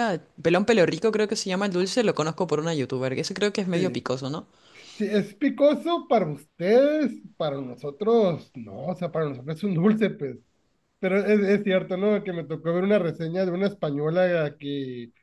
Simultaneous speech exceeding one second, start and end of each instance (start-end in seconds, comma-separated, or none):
none